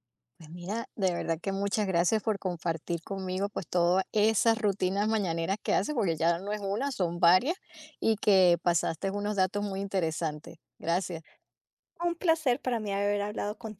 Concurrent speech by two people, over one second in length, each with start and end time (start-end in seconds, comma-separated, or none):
none